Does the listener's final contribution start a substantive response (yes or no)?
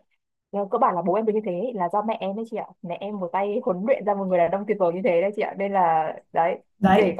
no